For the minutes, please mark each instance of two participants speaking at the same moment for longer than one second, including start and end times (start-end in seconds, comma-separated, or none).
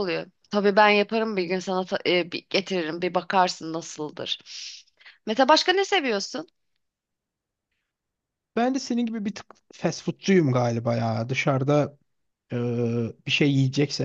none